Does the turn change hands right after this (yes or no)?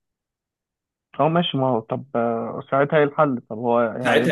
yes